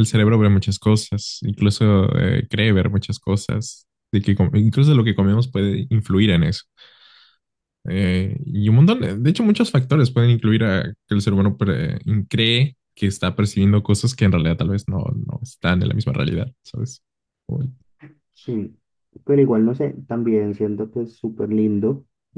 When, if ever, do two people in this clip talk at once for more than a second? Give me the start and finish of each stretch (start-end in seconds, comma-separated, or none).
none